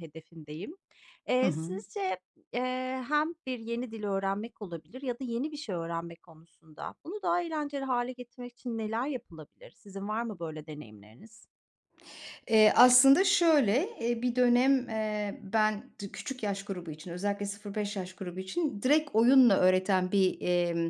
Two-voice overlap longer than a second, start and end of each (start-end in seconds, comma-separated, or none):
none